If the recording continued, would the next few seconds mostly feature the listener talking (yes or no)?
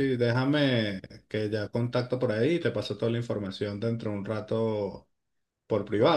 yes